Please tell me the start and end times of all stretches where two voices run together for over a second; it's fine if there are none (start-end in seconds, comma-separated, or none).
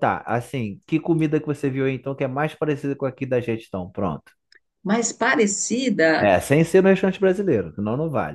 none